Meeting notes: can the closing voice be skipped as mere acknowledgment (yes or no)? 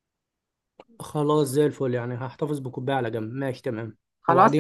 no